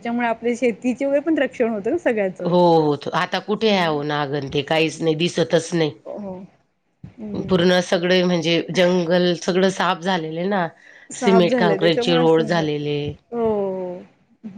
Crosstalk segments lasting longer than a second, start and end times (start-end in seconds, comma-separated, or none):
11.2-12.7